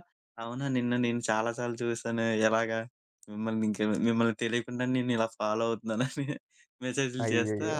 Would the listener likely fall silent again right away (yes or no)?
yes